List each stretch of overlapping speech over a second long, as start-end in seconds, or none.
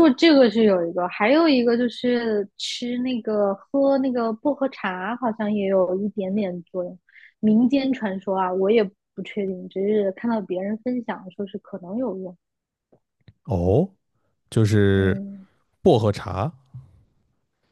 none